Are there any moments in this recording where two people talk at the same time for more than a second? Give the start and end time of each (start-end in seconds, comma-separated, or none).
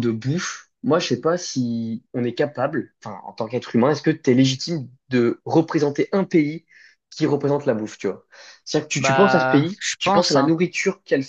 9.0-10.5